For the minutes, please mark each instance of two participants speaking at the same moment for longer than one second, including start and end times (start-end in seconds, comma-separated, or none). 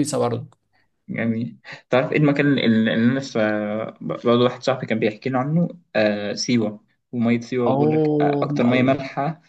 7.7-9.0